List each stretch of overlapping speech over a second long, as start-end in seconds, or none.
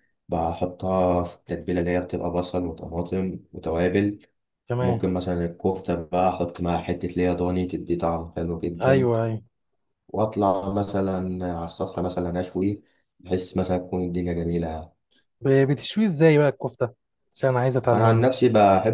none